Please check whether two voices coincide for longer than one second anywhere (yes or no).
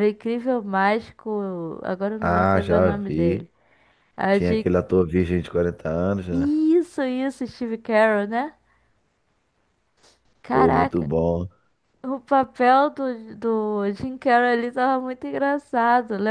yes